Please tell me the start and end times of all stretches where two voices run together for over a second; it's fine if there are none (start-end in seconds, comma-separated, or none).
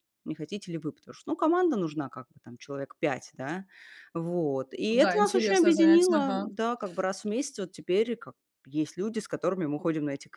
4.9-6.5